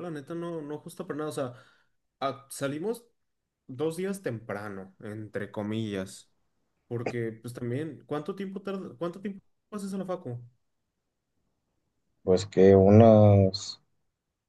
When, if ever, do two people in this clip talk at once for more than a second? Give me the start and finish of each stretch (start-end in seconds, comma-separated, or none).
none